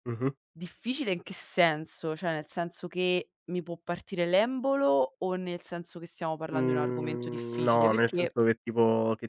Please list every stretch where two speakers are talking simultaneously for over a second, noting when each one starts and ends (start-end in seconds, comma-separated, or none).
6.5-8.4